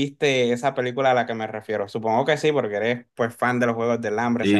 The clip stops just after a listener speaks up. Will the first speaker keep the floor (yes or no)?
no